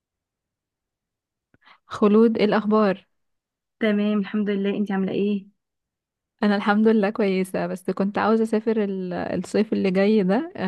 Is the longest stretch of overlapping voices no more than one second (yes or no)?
yes